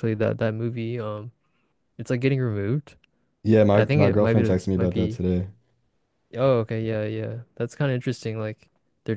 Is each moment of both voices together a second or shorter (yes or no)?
no